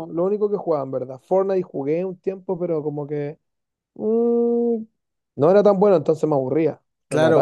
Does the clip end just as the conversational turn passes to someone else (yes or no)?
yes